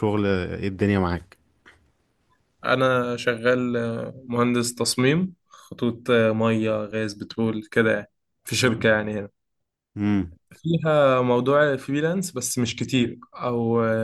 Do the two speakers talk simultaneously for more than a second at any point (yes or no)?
no